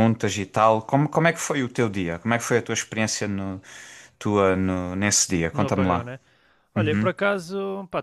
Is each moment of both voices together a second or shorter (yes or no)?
yes